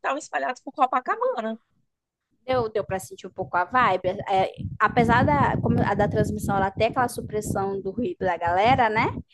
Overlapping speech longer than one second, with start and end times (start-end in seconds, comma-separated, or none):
none